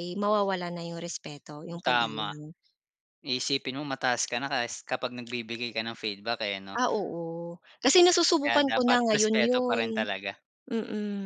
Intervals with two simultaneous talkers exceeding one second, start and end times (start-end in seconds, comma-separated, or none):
8.4-9.8